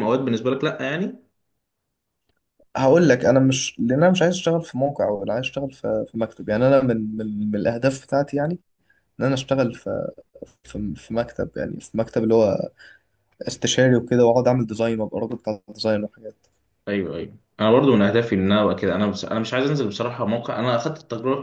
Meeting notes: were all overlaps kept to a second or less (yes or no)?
yes